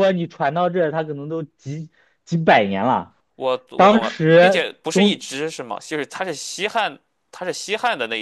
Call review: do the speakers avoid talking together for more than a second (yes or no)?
no